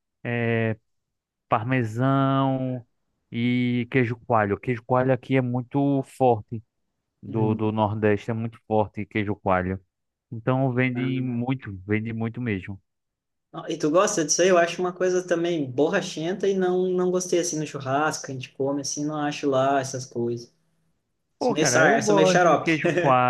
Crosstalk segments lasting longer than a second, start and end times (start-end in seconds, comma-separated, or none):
21.4-22.8